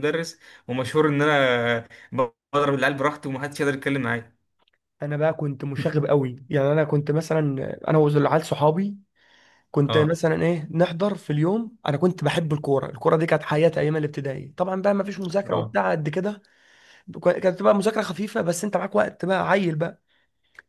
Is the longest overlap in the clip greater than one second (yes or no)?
no